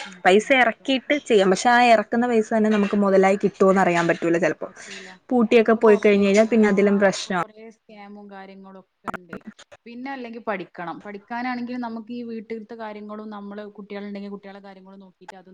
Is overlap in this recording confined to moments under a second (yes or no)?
yes